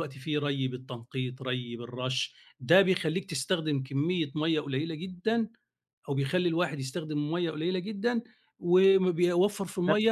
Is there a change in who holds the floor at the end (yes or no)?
no